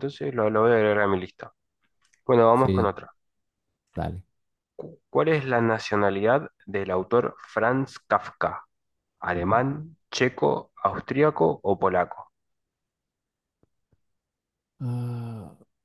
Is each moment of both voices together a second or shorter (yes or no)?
yes